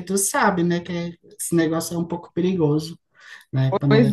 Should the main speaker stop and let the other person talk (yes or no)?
yes